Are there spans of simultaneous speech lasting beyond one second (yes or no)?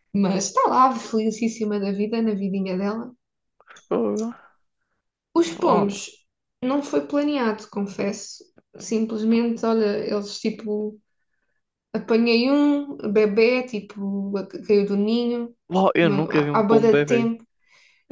yes